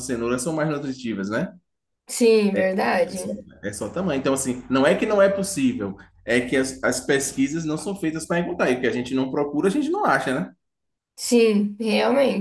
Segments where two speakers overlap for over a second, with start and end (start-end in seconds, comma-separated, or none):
none